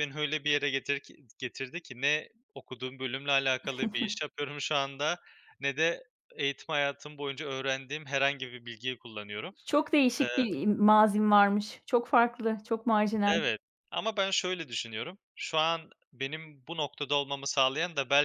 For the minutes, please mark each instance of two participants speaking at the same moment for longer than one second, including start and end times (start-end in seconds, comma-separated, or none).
none